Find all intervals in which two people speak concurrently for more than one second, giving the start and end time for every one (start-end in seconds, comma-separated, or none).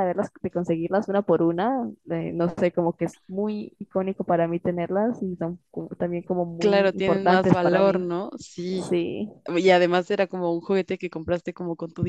6.6-8.1